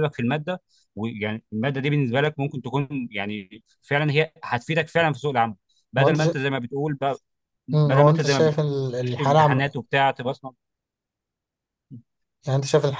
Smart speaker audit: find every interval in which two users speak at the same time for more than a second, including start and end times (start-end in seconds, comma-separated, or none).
7.7-9.6